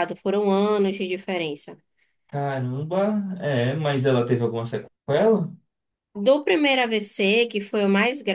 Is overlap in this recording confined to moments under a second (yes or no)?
yes